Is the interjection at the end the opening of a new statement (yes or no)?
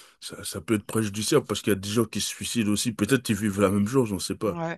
yes